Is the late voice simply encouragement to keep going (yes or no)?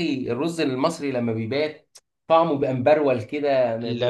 no